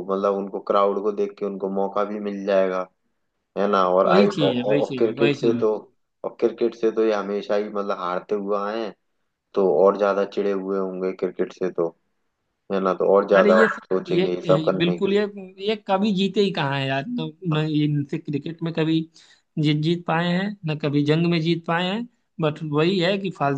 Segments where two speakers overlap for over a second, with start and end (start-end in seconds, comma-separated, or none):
4.0-5.7, 13.3-15.2